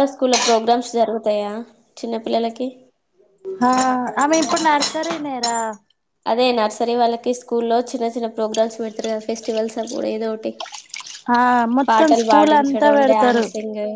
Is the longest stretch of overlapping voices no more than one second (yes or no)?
no